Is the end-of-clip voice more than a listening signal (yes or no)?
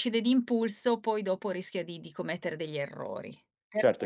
yes